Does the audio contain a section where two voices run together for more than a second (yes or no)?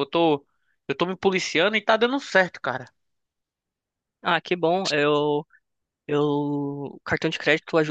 no